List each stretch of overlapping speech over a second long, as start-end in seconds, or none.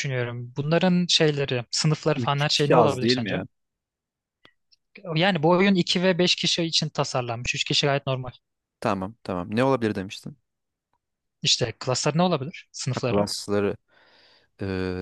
2.2-3.4